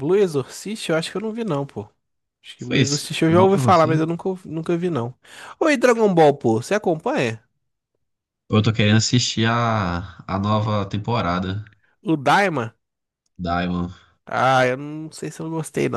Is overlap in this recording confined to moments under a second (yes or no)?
no